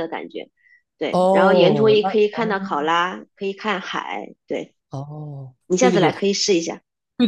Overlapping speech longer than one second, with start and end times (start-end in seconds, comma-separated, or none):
1.1-2.5